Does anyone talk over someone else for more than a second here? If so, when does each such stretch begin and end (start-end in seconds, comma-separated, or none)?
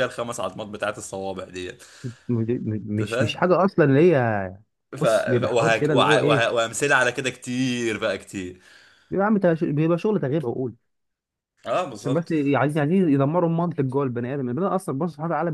5.0-6.6